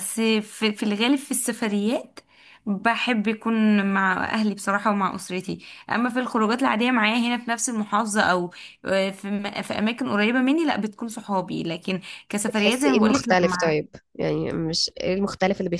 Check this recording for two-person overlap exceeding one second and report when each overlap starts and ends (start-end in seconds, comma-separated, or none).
12.5-13.8